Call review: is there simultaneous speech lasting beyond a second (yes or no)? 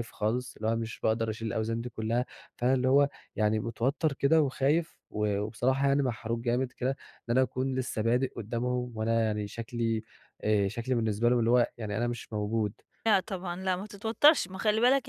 no